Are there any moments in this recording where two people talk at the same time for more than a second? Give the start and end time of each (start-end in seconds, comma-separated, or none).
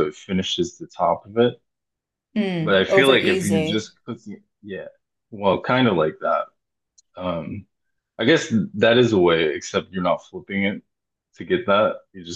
2.6-3.9